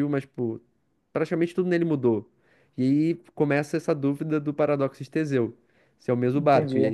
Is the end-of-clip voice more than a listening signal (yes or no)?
yes